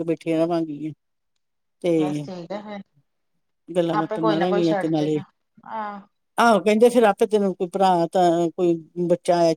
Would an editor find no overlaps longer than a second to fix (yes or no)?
no